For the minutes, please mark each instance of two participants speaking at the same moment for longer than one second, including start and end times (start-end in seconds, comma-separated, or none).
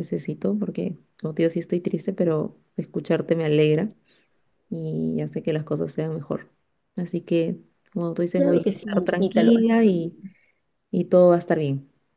8.4-10.1